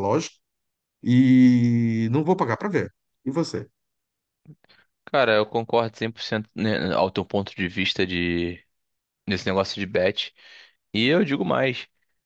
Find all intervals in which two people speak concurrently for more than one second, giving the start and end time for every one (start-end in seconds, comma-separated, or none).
none